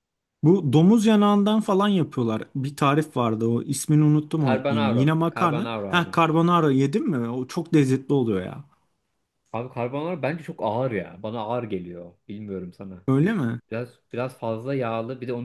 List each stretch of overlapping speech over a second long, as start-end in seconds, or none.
4.4-6.1